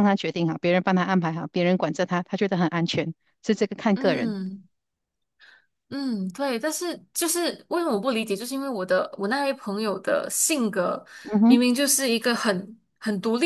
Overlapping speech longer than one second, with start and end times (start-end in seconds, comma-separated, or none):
none